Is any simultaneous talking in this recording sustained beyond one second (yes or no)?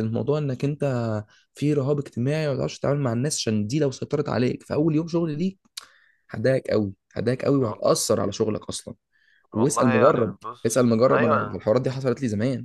yes